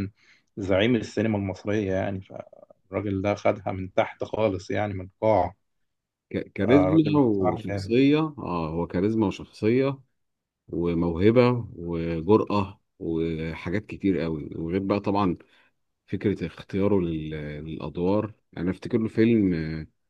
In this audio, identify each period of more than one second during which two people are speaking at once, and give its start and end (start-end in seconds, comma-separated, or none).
6.6-7.9